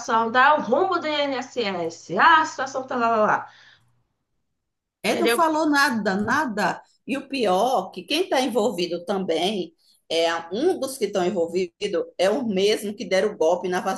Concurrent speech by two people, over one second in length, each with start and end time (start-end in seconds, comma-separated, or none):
none